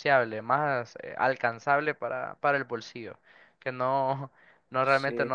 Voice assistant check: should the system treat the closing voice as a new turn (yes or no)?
no